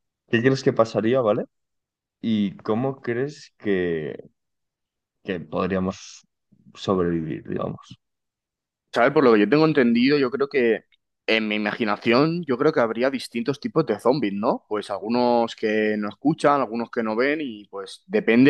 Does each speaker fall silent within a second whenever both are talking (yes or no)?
yes